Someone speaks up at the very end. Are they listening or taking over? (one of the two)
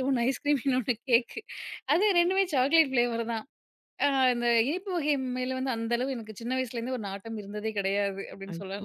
taking over